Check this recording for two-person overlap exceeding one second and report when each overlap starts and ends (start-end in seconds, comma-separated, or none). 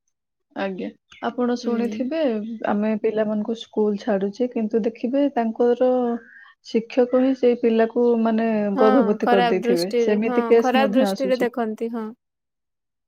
8.8-11.5